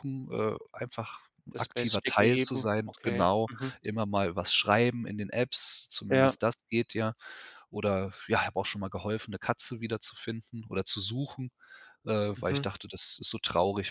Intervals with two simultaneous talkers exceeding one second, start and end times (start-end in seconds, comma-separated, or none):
1.5-3.8